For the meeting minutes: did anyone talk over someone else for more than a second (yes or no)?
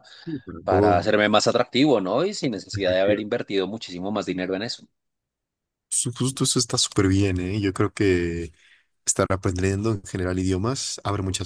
no